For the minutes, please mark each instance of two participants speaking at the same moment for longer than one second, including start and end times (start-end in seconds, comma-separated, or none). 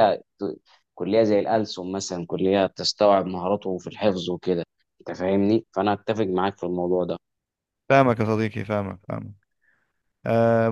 none